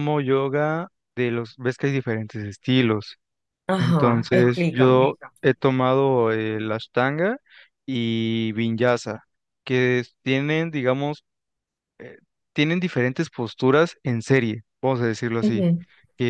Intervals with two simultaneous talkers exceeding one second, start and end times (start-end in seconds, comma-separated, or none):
3.8-5.1